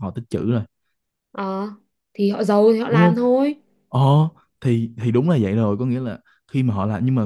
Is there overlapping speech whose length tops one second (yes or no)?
no